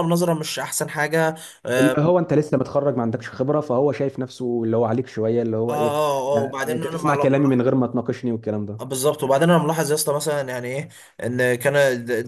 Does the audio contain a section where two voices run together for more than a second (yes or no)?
yes